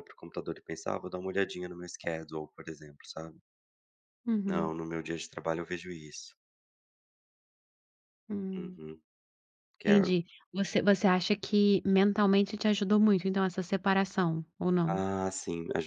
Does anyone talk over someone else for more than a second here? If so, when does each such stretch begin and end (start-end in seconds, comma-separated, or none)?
none